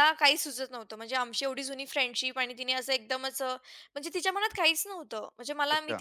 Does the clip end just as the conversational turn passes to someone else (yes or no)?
no